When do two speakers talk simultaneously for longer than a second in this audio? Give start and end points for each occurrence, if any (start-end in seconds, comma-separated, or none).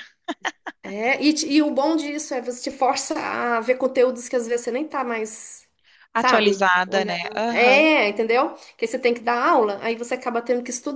6.2-7.8